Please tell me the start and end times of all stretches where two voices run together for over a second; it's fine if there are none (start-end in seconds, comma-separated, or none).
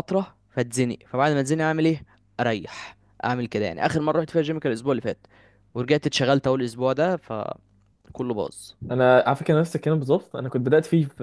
none